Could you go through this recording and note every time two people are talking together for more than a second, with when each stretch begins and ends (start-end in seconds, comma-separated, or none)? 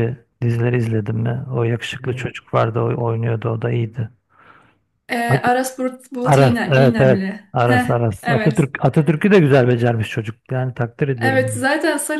6.2-8.7